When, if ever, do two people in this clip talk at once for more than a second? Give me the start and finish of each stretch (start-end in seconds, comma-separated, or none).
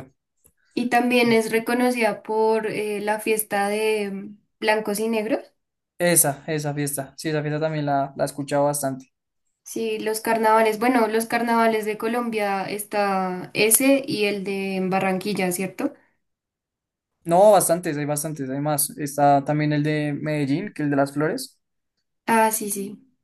none